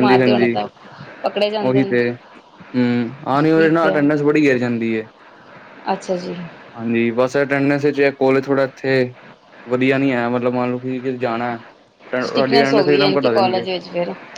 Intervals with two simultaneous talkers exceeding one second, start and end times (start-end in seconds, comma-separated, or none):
12.3-13.7